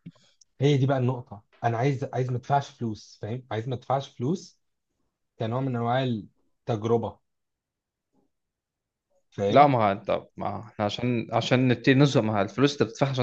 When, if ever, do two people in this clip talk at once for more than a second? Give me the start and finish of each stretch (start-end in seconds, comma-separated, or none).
none